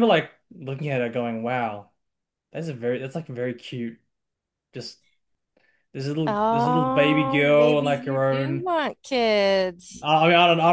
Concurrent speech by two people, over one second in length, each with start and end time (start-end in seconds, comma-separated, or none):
6.3-8.7